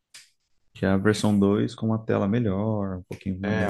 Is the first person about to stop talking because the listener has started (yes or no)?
yes